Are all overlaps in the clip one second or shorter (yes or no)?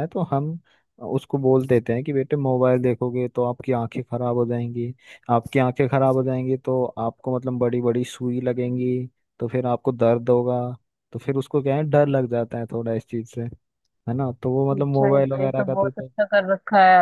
no